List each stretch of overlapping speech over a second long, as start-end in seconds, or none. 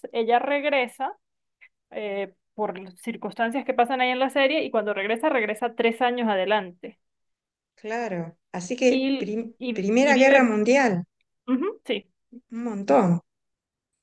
8.9-10.6